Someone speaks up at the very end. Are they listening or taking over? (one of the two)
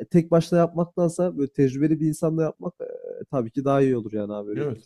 taking over